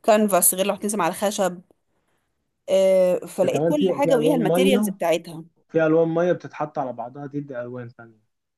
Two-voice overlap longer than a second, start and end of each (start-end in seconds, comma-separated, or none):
3.4-4.9